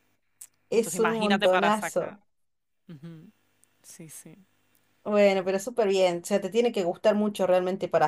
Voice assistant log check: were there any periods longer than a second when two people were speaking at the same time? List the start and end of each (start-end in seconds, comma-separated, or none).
0.7-2.2